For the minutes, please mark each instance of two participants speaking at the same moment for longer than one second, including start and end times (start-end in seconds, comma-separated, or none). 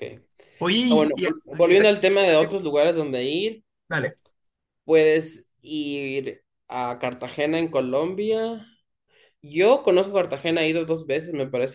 0.9-2.7